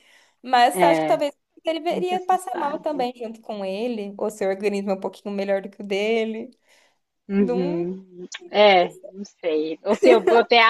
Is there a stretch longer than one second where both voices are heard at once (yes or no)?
yes